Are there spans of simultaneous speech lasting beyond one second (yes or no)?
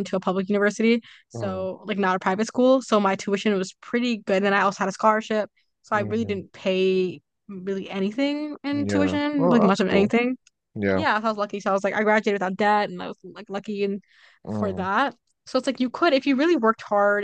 yes